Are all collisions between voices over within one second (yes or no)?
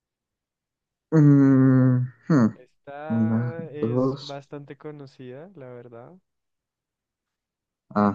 no